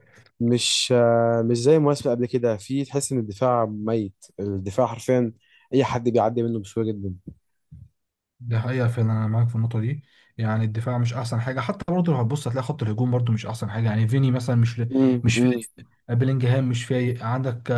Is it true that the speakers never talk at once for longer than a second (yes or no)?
yes